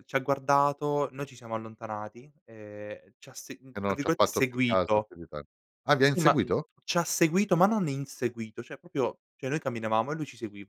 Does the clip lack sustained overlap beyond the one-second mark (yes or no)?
no